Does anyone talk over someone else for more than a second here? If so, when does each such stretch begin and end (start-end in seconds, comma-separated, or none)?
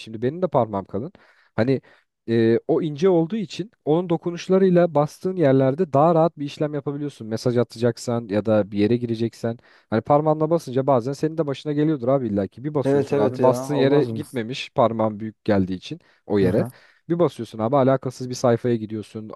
12.8-14.2